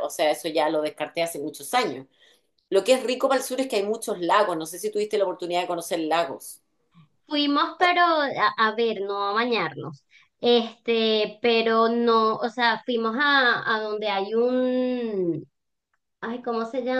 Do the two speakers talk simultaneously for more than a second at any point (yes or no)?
no